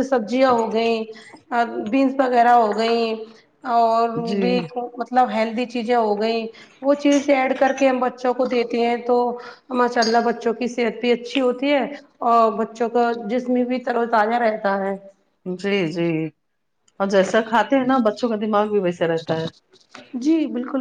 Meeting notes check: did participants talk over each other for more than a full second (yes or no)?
no